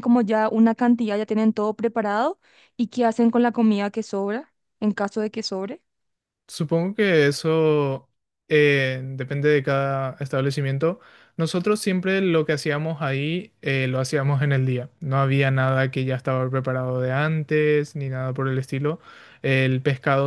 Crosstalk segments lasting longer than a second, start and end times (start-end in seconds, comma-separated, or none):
none